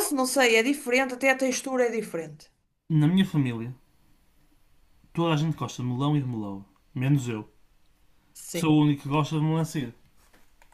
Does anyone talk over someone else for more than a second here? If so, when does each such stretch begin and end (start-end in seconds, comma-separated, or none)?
none